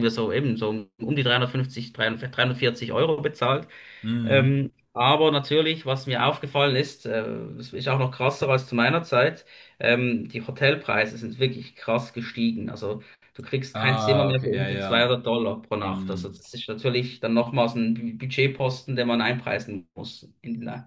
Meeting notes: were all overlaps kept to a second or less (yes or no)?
no